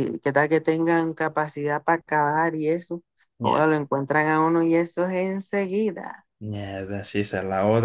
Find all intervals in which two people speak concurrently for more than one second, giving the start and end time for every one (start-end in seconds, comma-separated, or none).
none